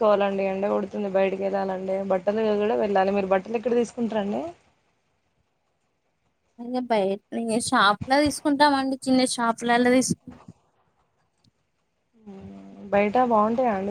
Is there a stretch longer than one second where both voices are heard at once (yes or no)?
no